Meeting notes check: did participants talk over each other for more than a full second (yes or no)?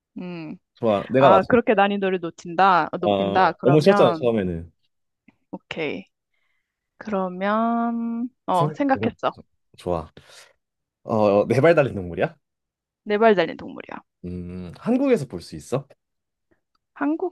yes